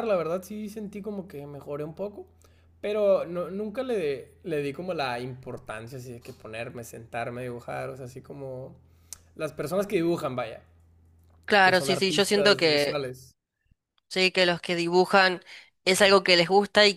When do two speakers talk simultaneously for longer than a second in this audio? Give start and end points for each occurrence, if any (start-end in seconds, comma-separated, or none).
11.6-13.0